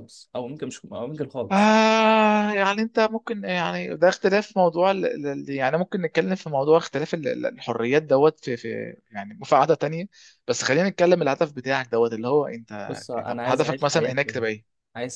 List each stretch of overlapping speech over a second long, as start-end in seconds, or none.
12.9-14.4